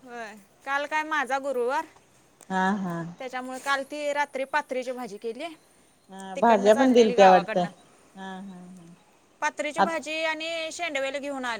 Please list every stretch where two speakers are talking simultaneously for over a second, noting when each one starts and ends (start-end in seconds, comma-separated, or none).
6.4-7.6